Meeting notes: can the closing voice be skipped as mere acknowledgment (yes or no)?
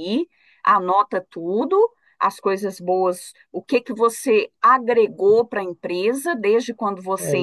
no